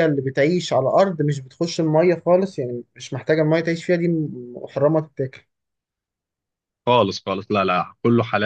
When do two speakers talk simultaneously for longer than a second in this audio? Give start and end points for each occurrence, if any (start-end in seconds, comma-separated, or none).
none